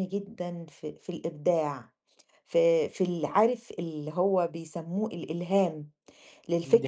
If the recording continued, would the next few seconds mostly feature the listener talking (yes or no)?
no